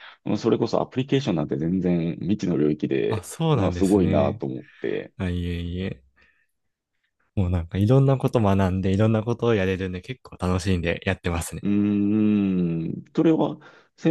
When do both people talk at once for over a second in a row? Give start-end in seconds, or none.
3.1-4.4